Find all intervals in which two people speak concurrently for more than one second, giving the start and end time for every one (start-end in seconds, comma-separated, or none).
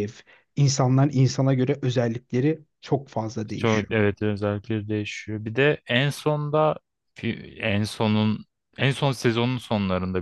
none